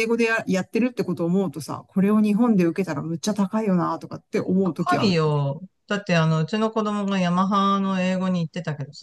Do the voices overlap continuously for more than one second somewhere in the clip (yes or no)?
no